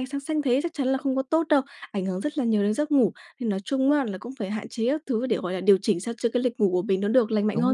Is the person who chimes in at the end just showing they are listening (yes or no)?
no